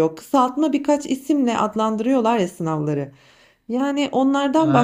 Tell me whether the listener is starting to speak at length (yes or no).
no